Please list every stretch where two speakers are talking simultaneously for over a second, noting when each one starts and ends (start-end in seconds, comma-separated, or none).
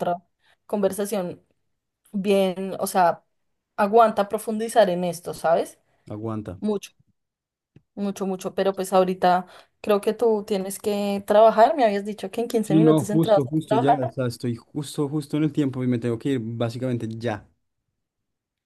12.7-14.1